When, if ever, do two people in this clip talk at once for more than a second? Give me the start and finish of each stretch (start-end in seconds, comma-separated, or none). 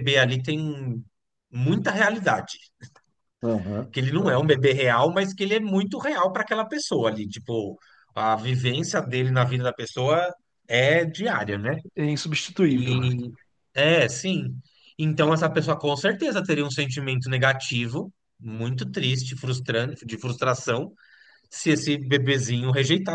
none